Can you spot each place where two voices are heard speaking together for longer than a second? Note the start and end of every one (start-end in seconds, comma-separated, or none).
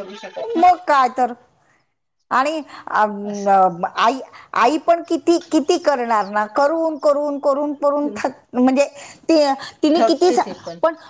none